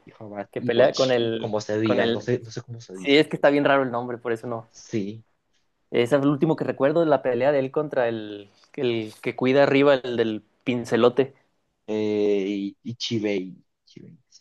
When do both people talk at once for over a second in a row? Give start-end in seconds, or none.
0.5-2.3